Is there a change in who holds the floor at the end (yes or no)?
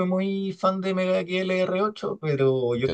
no